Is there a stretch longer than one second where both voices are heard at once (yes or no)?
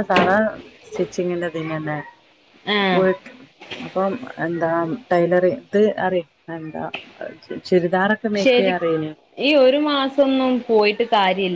no